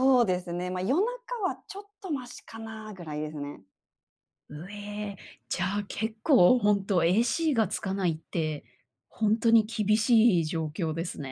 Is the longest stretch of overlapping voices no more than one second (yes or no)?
yes